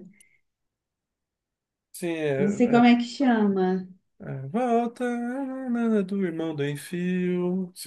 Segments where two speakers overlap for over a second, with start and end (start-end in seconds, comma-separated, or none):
none